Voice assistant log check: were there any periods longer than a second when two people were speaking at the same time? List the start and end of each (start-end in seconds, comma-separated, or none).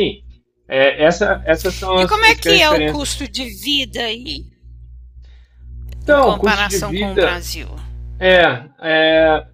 2.0-3.2, 6.1-7.4